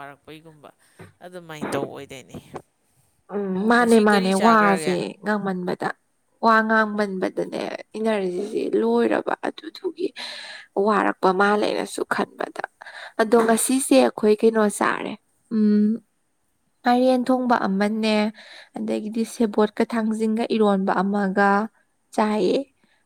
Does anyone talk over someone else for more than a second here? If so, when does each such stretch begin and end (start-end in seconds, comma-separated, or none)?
3.7-5.0